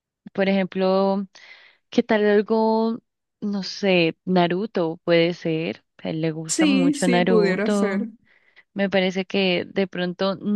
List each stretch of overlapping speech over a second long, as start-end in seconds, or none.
6.5-8.1